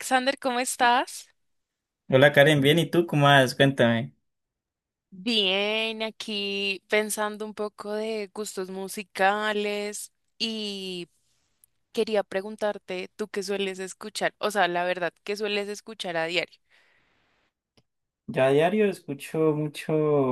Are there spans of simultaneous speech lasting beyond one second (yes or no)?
no